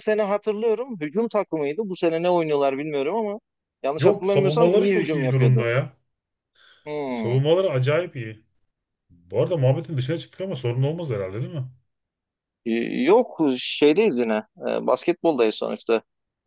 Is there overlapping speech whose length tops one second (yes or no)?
yes